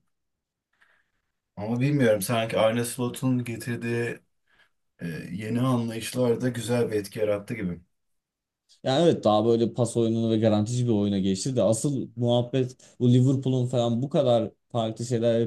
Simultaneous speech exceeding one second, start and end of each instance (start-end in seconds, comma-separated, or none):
none